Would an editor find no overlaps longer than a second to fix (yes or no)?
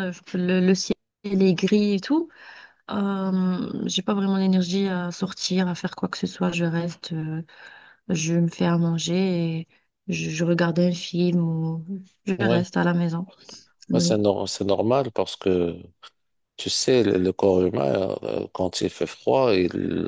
yes